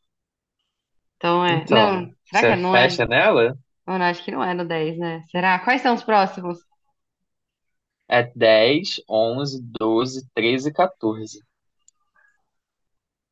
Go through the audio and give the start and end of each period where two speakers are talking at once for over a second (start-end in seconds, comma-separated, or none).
1.5-2.9